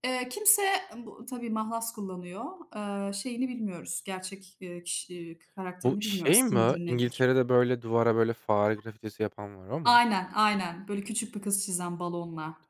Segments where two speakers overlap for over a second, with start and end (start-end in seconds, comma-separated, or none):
5.8-7.3